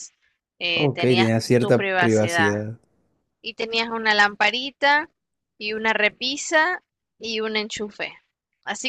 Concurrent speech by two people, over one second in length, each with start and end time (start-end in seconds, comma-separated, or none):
0.7-2.6